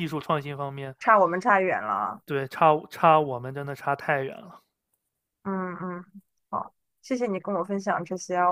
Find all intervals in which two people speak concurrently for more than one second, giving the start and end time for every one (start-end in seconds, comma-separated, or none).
none